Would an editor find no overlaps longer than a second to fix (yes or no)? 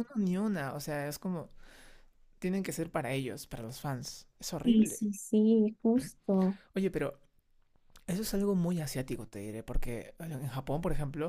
yes